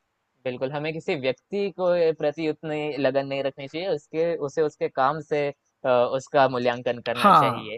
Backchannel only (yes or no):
no